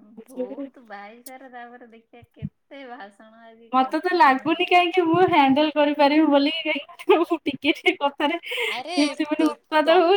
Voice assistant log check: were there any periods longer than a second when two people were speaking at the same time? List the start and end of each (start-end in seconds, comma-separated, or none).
none